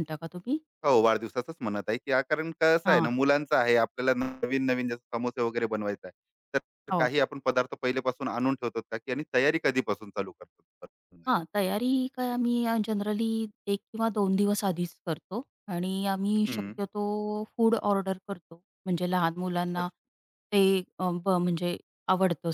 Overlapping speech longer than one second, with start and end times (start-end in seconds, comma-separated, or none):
none